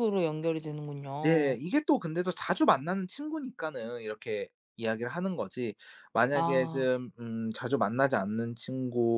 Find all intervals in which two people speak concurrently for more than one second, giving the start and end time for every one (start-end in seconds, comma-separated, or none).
none